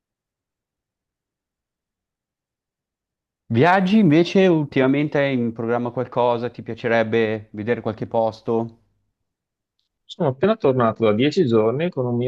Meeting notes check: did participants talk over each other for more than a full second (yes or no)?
no